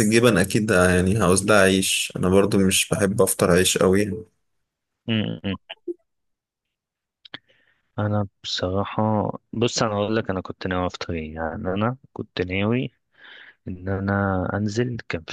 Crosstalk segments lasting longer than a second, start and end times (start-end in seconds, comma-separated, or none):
none